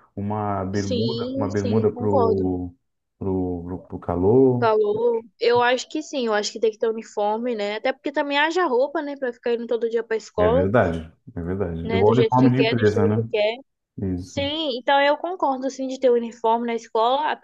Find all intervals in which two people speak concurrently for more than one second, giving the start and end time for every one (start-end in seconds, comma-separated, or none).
0.7-2.4, 11.8-13.3